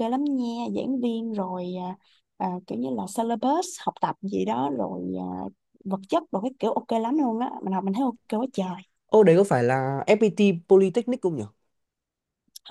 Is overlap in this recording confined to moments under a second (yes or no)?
yes